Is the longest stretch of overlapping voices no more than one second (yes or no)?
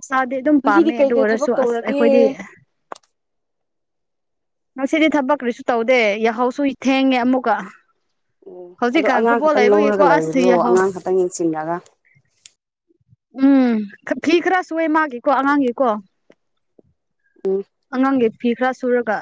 no